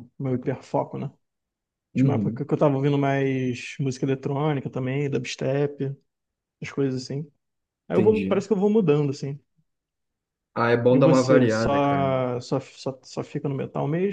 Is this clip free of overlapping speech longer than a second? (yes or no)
no